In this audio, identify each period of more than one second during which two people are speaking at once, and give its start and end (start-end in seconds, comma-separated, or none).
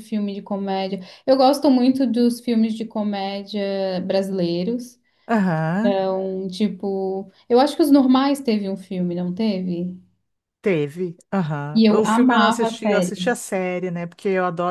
11.8-13.3